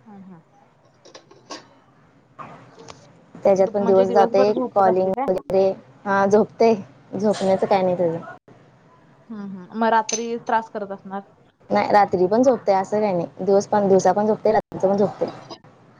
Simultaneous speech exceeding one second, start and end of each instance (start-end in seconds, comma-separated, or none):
3.6-5.3